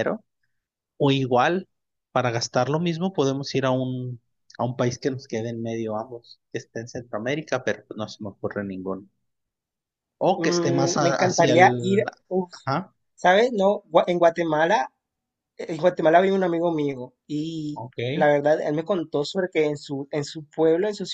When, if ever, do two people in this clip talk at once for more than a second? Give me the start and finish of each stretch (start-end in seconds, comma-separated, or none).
10.4-12.0